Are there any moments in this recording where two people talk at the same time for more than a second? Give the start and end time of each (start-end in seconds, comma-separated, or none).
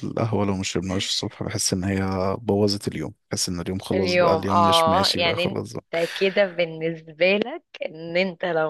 3.9-5.8